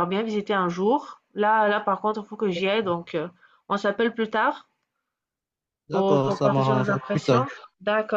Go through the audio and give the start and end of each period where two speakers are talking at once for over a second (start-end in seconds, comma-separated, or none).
5.9-7.5